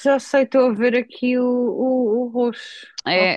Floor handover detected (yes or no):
yes